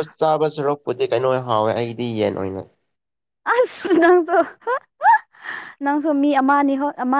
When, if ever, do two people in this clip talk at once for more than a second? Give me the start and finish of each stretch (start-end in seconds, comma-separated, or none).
none